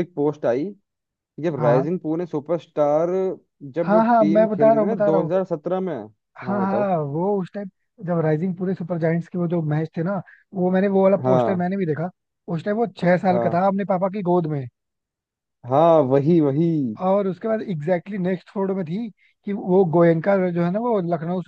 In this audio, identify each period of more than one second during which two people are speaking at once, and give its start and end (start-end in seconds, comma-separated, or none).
3.8-5.3